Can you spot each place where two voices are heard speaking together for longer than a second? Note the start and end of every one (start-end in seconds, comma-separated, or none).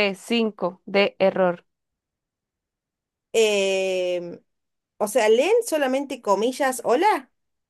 none